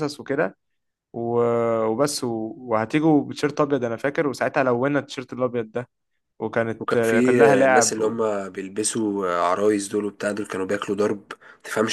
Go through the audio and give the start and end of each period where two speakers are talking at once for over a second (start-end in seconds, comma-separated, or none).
6.8-8.2